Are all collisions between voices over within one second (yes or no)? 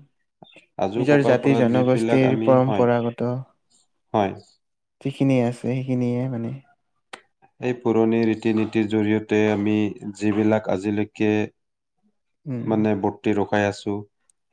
no